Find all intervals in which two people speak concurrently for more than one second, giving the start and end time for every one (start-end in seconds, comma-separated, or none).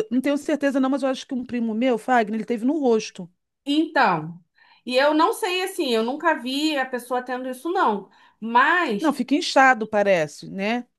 none